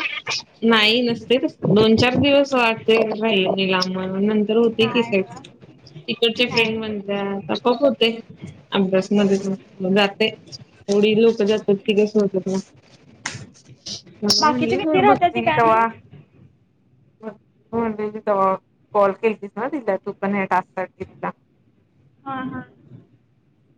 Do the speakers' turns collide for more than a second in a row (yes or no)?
yes